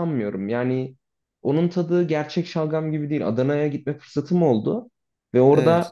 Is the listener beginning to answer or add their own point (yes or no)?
no